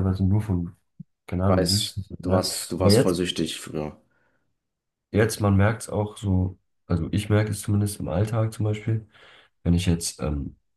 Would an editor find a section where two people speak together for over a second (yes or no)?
yes